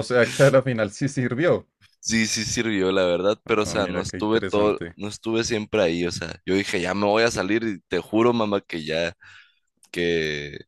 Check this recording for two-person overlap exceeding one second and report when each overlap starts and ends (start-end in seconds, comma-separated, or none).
3.5-5.0